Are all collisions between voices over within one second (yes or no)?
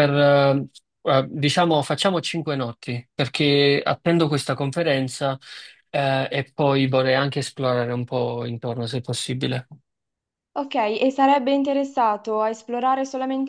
yes